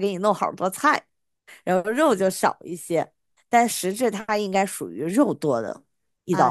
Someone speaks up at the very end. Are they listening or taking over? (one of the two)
taking over